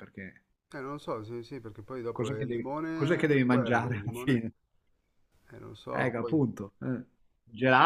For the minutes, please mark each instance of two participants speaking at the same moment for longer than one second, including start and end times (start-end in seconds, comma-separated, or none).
2.1-4.4